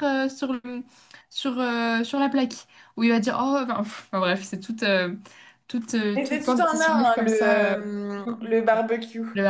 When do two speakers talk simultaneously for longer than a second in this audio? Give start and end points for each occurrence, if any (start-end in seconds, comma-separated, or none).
6.1-7.8